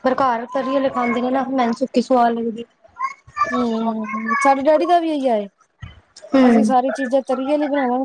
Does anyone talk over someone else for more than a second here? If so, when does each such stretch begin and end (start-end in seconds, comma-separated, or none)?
none